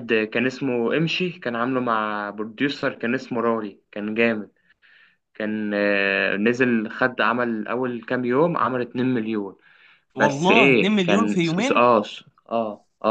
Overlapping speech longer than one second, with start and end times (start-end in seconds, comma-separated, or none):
10.2-11.8